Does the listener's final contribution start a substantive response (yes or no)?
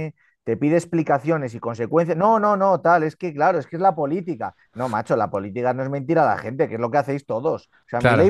no